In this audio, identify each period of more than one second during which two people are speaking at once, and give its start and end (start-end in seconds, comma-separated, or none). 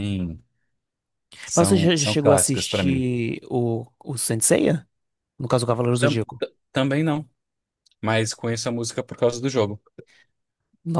1.5-3.0